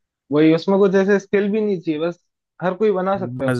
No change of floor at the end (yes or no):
no